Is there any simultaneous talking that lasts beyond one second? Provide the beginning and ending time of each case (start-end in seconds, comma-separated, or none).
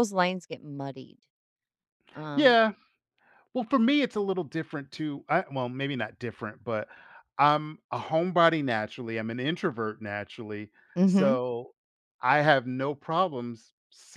none